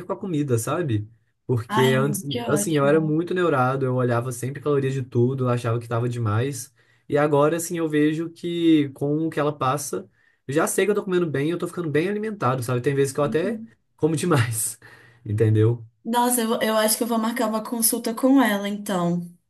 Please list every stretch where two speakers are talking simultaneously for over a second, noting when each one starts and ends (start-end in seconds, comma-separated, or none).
1.7-3.1